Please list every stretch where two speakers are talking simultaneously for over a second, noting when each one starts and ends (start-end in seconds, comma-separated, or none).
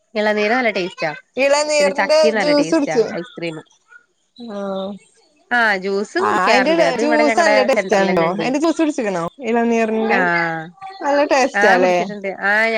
6.2-8.5